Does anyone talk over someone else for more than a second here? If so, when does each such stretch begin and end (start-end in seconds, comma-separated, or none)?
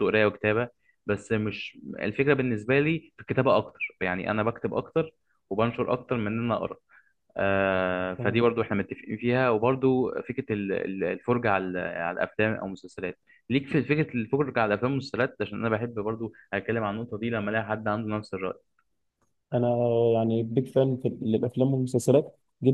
none